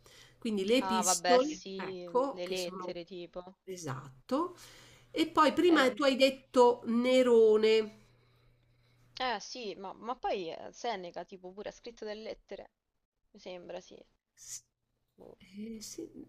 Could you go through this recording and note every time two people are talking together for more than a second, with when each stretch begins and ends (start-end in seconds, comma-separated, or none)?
0.8-2.9